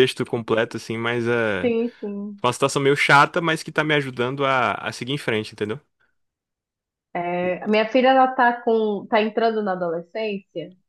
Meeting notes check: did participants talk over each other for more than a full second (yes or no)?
no